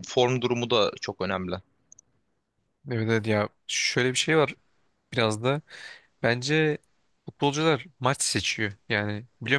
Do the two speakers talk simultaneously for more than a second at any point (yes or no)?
no